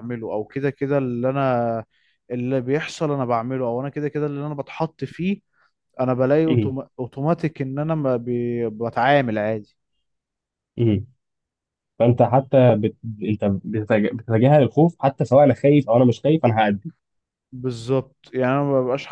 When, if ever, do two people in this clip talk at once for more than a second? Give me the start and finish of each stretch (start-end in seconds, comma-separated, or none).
none